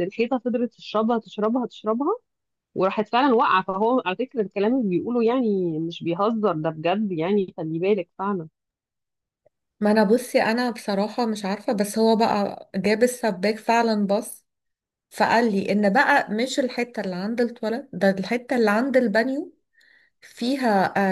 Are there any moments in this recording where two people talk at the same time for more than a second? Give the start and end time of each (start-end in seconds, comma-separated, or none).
none